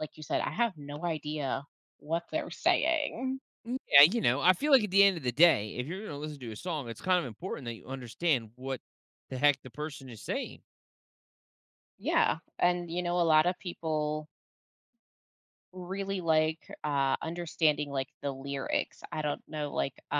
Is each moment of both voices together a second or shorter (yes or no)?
yes